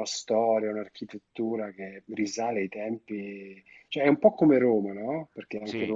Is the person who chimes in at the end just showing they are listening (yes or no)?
yes